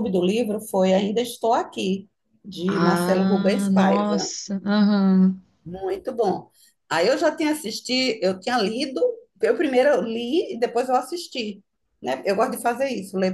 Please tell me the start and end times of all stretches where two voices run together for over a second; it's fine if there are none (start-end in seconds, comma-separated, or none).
2.7-4.3